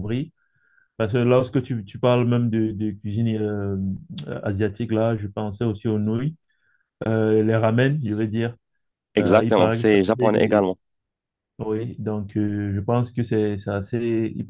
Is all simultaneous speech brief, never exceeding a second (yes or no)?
no